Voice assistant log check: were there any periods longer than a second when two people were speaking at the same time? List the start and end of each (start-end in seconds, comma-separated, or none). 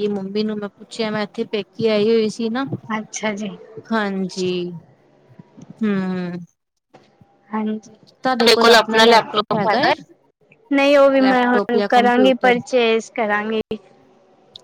11.2-12.6